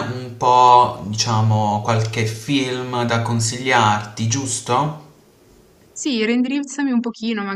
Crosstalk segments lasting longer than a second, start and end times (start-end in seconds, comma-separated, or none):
none